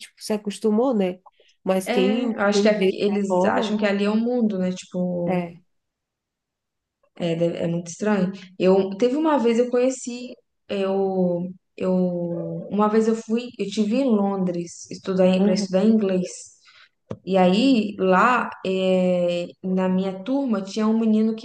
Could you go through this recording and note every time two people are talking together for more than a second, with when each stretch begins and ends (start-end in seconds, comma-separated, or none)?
1.8-3.8